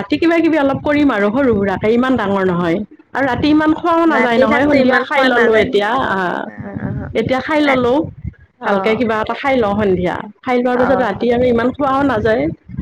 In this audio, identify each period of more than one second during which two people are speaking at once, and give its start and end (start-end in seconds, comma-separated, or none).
4.2-5.8